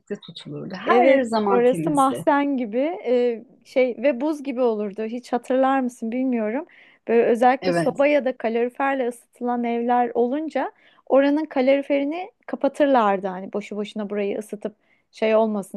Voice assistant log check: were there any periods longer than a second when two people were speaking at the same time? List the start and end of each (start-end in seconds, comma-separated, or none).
0.8-2.2